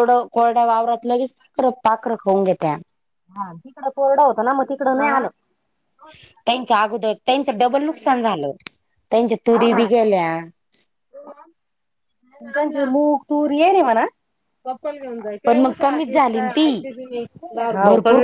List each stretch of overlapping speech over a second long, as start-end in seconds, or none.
15.4-16.7